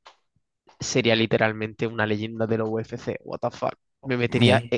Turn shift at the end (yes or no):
no